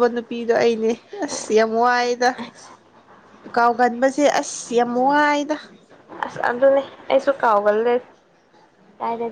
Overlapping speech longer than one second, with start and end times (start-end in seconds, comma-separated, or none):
none